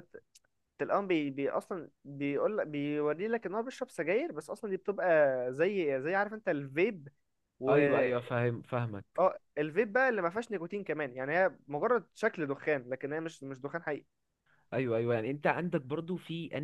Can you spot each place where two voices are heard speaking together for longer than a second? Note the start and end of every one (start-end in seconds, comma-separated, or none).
none